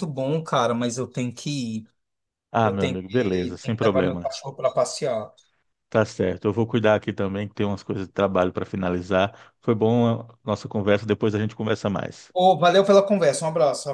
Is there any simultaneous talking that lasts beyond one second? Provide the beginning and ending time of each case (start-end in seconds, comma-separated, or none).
2.6-4.3